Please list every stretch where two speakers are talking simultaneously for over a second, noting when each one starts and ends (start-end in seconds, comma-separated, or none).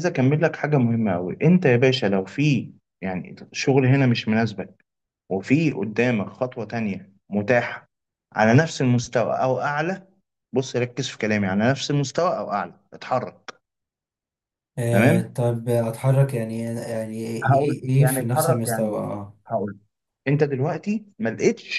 17.4-19.1